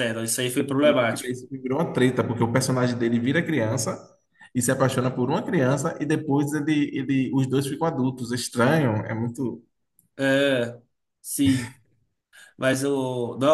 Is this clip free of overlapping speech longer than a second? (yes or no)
yes